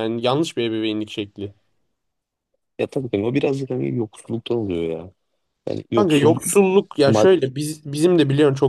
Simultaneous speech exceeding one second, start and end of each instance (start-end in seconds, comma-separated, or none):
none